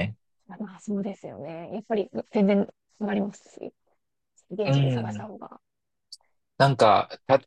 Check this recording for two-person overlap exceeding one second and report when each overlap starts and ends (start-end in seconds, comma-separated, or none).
none